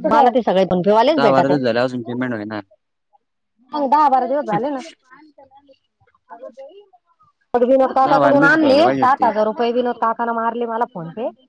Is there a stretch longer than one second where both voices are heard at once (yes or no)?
yes